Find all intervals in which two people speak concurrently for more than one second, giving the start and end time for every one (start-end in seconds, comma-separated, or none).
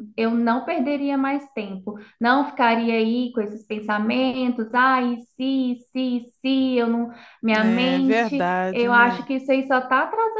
7.6-9.2